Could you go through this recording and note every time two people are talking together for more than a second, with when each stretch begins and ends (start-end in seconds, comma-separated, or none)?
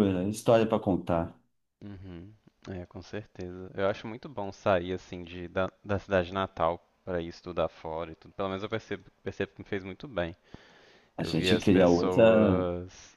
11.2-12.6